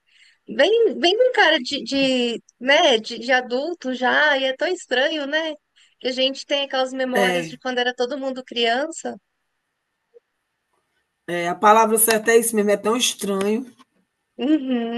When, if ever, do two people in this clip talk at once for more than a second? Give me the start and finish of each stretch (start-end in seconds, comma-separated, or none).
none